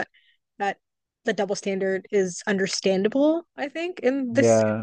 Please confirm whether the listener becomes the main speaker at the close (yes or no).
yes